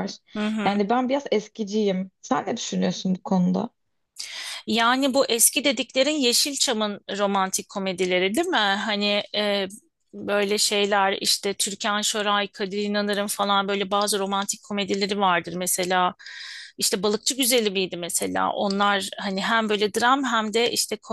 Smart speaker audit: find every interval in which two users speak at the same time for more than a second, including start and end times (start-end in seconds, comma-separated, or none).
none